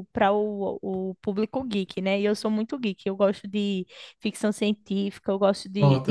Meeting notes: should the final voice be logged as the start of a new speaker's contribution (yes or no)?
no